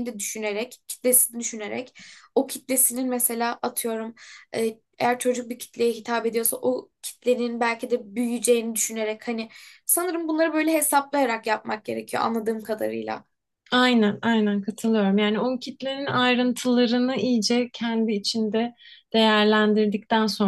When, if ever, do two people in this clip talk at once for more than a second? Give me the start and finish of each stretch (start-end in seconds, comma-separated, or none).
none